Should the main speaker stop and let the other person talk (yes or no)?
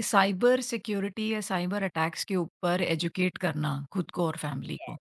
yes